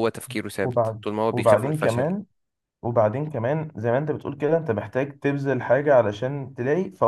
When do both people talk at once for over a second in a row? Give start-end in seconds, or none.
0.6-2.1